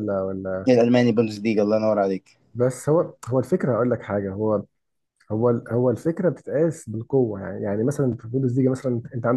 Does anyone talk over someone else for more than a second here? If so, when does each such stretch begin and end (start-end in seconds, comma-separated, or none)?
none